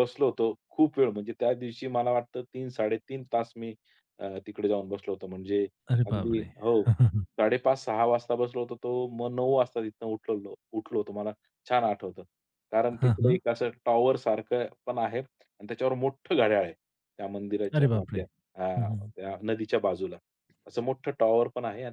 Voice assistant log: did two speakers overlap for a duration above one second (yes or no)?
no